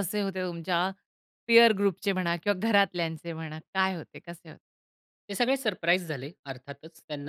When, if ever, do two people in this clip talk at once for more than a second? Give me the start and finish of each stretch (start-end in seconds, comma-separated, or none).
none